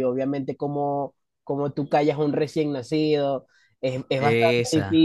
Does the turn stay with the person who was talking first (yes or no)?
yes